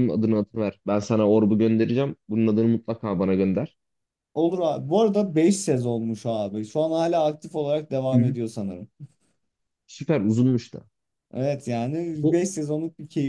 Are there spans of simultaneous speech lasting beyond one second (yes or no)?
no